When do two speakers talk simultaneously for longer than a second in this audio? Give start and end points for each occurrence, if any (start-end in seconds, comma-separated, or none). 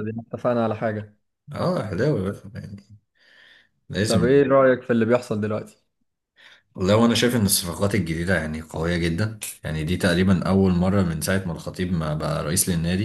none